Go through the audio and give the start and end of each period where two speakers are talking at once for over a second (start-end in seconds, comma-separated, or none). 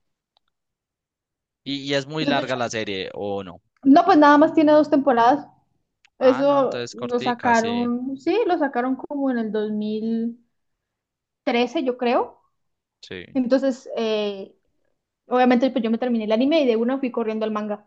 6.2-7.9